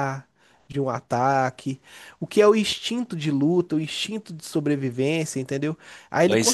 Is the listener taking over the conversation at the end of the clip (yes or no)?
no